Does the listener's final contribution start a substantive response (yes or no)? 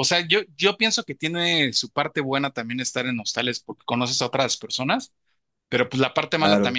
no